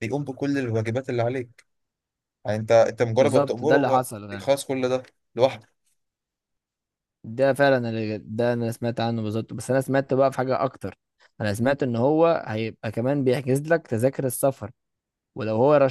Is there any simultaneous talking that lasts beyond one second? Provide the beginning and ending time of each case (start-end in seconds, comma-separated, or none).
3.2-4.5